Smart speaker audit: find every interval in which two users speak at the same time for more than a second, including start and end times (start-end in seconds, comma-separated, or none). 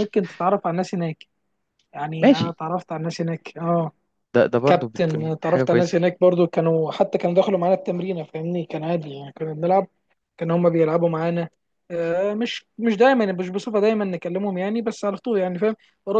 4.7-6.0